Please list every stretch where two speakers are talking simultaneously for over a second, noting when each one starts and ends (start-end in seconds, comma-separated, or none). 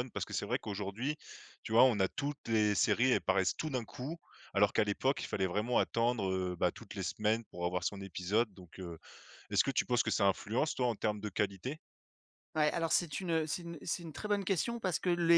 none